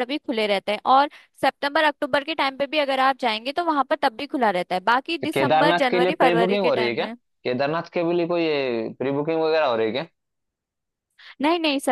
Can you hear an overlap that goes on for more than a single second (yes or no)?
yes